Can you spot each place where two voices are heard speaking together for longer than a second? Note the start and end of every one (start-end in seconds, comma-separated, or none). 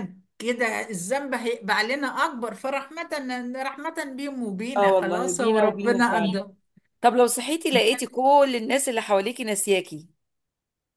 4.8-6.4